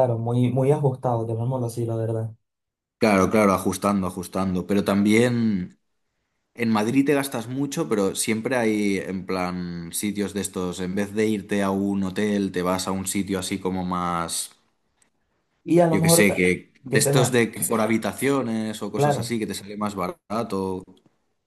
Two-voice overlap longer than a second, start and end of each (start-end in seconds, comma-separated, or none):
15.9-17.3